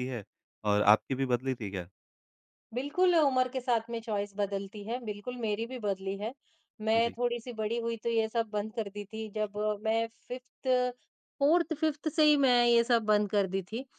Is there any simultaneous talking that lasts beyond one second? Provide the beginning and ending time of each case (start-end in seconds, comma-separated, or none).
none